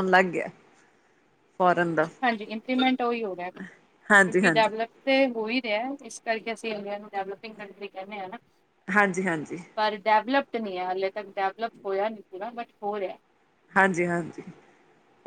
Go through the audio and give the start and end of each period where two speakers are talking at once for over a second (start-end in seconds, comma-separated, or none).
none